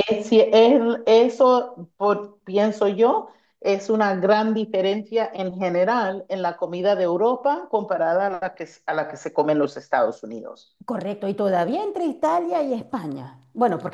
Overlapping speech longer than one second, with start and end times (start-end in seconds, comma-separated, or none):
none